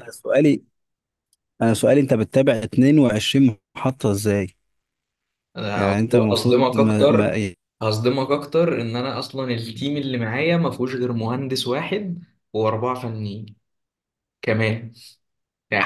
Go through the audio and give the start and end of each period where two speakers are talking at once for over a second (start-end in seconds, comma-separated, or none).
5.8-7.3